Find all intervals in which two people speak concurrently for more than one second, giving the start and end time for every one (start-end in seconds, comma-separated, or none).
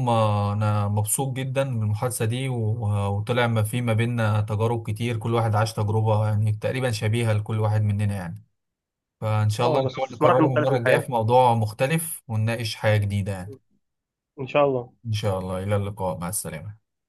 9.6-11.1